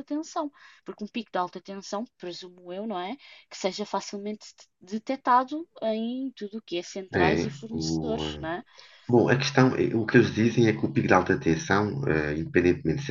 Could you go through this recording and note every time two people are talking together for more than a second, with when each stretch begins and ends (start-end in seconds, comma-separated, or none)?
7.1-8.5